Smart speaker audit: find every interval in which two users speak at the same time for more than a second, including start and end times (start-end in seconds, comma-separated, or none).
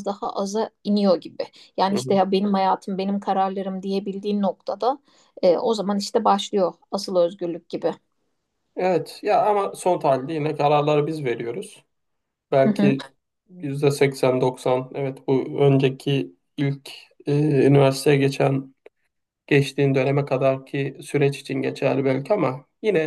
none